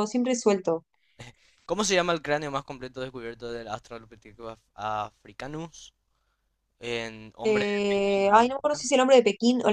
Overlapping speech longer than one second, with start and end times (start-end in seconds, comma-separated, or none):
7.4-8.8